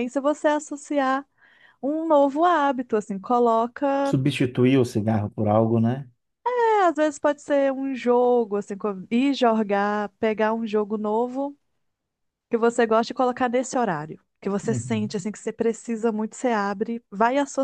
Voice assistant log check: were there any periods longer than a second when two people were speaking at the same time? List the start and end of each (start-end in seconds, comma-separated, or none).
none